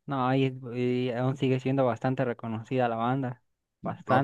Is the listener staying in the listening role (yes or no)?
no